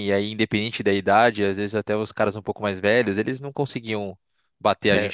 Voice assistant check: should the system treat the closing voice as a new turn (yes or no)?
yes